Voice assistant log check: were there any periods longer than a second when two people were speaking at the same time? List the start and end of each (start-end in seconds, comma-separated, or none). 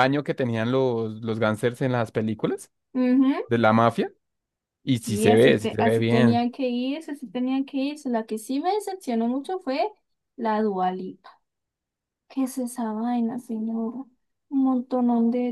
5.0-6.5